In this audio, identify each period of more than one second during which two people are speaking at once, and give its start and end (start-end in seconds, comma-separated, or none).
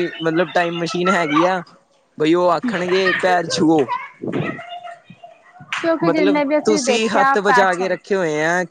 6.0-8.0